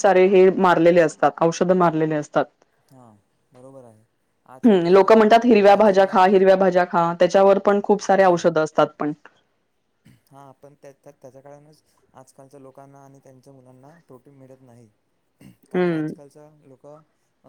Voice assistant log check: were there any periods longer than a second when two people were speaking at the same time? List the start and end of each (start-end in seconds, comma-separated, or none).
4.7-6.5